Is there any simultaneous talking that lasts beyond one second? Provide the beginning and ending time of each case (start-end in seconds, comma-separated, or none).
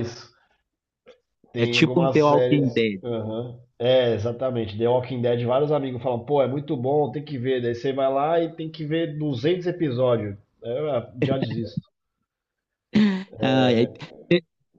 1.5-3.0